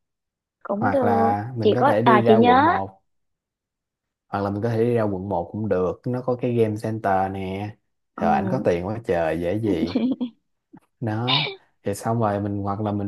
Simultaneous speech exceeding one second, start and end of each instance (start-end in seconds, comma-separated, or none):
0.7-2.8